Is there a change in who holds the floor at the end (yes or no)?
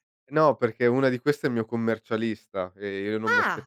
no